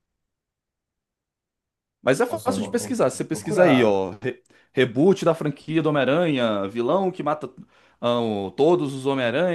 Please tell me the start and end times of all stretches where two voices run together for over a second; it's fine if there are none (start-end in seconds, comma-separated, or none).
2.3-4.0